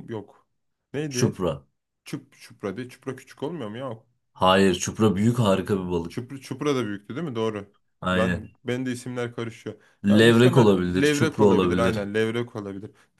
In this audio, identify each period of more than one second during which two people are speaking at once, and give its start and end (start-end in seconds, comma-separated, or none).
10.1-11.9